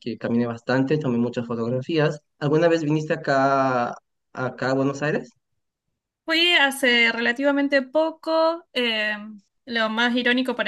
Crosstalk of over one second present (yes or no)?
no